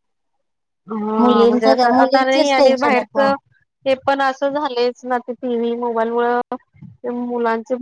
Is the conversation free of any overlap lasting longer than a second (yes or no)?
no